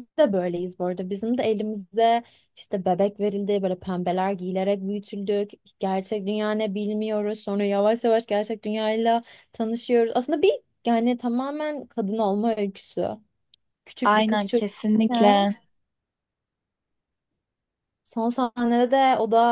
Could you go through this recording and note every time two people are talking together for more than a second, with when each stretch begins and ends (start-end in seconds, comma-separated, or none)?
14.0-15.4